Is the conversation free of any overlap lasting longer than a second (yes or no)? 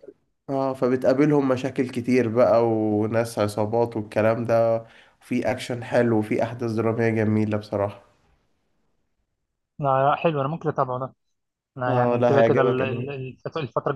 no